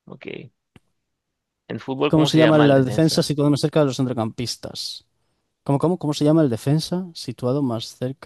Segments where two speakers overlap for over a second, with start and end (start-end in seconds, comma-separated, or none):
2.1-3.3